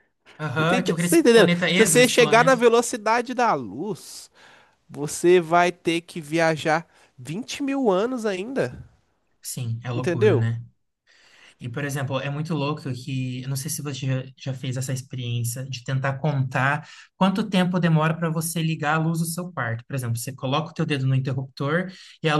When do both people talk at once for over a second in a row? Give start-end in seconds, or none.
0.6-2.6